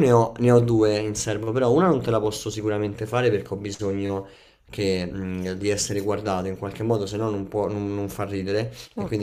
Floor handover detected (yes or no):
no